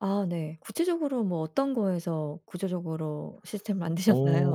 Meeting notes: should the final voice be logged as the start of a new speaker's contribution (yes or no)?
yes